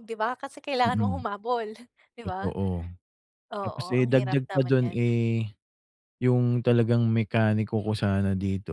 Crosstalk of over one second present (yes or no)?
yes